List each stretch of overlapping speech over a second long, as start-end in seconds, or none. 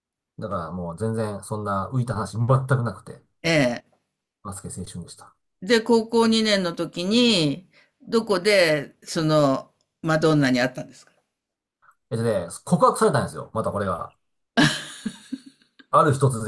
none